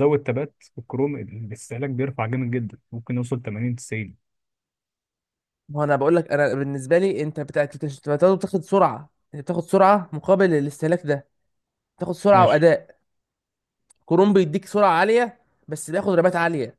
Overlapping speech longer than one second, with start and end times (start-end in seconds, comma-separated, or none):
none